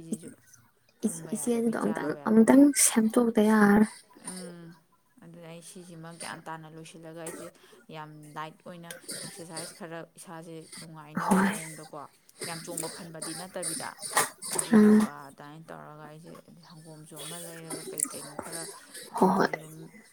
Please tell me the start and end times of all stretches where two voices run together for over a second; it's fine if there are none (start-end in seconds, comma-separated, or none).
1.1-2.6